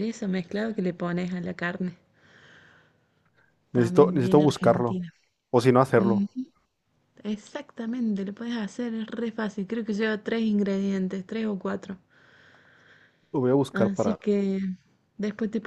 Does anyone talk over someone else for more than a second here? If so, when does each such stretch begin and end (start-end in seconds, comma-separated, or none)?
3.7-5.0